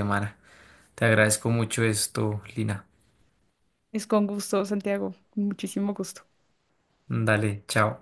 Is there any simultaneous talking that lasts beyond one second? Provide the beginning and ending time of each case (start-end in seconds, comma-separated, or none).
none